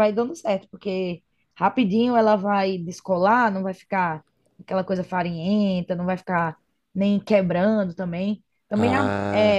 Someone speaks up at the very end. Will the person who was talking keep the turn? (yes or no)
yes